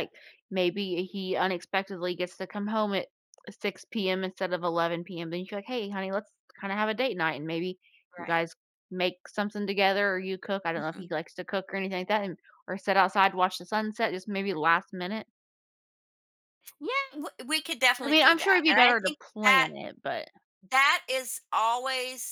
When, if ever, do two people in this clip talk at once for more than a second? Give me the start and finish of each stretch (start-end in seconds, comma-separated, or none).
18.0-19.7